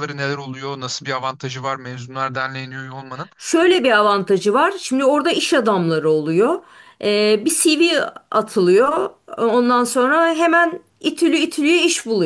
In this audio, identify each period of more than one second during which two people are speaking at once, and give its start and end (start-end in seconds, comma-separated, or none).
none